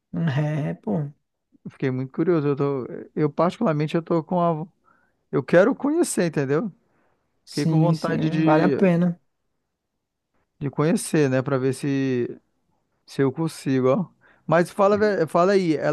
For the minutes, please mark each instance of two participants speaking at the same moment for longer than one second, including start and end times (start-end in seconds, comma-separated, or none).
7.5-8.7